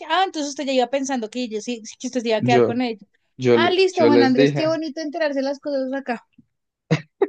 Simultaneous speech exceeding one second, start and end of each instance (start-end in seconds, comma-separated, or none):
3.5-4.8